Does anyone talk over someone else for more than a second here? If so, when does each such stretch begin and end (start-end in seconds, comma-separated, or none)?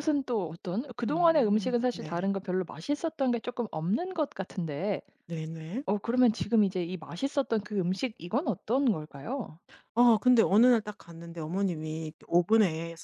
1.0-2.3